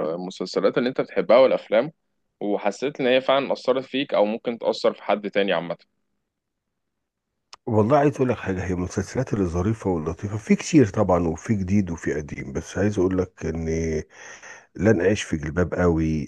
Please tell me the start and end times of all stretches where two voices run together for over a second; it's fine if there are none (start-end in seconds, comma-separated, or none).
none